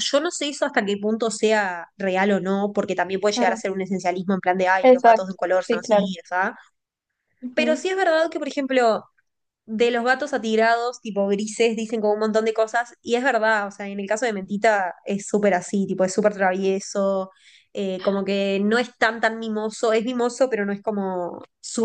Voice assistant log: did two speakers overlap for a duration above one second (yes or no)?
yes